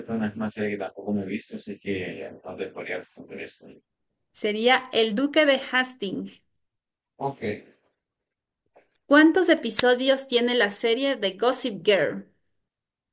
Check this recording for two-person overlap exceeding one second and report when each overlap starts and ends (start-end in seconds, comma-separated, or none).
none